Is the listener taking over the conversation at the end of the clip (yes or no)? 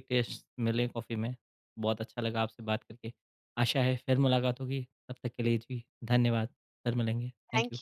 yes